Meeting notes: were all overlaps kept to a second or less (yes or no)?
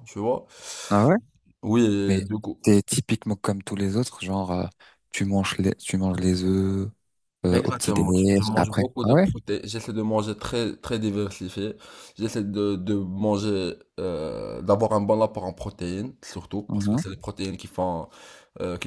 no